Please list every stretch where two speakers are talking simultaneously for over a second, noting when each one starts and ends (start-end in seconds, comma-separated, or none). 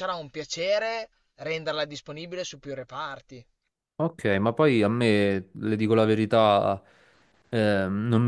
none